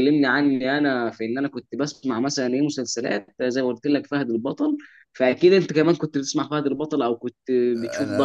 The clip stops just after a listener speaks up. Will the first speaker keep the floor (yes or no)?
no